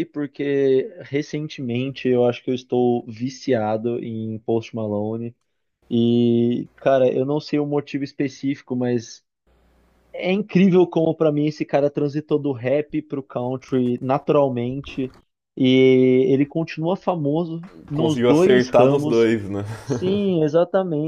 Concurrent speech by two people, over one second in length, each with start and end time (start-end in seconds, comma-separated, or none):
17.9-19.3